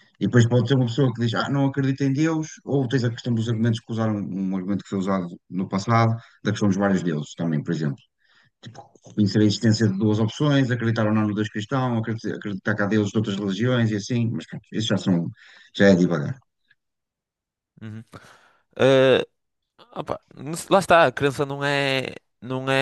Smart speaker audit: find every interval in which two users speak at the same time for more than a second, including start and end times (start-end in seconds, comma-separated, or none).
none